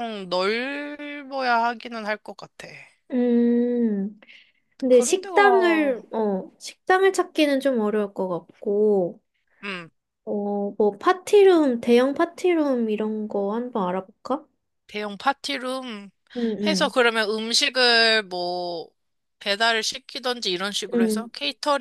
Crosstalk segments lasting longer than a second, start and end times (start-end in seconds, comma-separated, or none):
none